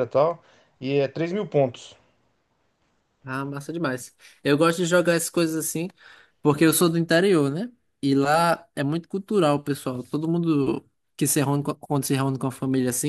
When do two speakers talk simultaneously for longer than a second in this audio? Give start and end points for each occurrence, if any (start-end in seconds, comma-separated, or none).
none